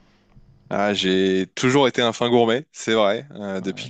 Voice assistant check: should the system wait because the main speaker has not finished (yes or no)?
yes